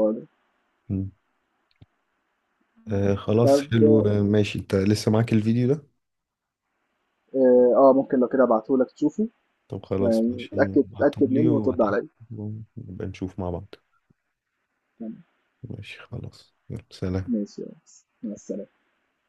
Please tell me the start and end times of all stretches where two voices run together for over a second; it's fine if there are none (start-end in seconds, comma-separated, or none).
10.0-12.1